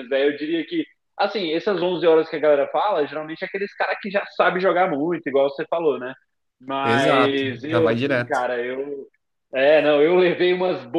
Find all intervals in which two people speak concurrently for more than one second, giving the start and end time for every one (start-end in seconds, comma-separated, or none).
6.8-8.5